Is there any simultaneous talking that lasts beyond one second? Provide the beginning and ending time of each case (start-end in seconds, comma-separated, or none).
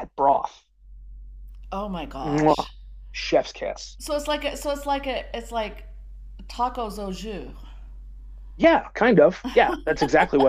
none